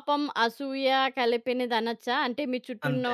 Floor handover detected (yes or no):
no